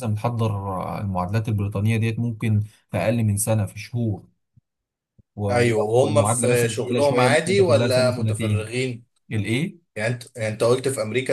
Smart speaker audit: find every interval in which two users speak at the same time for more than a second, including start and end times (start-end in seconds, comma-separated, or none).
5.5-8.7